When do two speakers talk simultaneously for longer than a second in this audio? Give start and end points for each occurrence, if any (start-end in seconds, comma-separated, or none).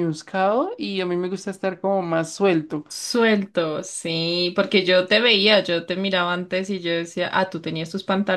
none